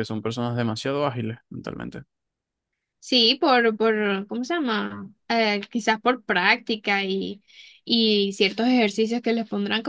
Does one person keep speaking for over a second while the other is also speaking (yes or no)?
no